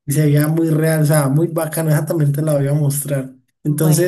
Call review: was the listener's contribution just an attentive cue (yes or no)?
yes